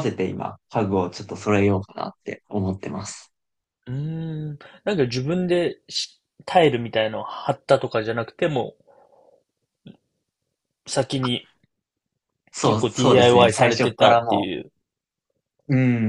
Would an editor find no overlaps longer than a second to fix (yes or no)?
no